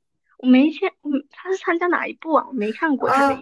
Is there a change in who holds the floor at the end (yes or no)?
yes